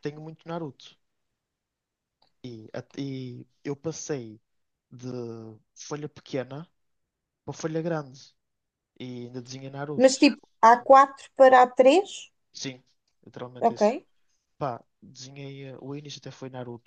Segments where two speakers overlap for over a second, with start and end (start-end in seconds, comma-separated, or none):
none